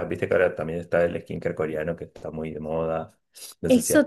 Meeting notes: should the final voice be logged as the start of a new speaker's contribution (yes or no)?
yes